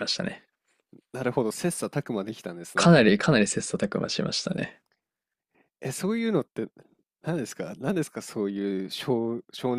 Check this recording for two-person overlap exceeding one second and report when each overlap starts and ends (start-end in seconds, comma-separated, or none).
none